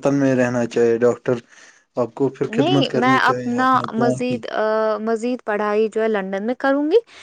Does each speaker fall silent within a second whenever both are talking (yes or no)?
no